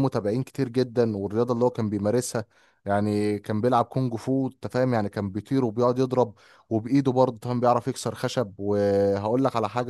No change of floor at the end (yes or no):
yes